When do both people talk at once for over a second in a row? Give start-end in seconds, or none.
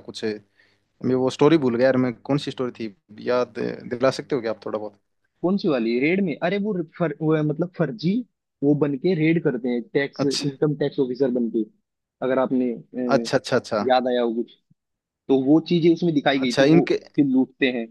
none